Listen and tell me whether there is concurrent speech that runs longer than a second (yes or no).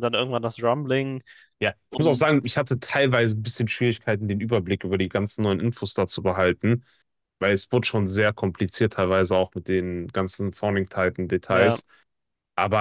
no